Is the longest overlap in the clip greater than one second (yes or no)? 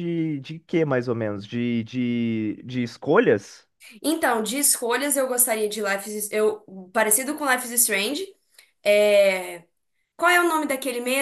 no